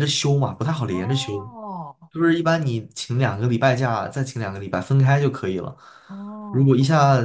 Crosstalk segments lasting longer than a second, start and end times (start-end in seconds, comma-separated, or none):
none